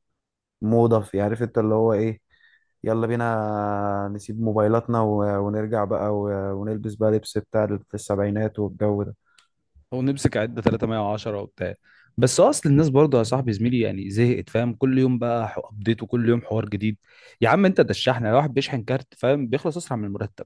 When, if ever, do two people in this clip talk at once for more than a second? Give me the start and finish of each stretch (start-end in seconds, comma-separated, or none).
none